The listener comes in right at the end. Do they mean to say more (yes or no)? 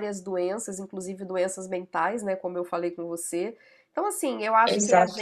no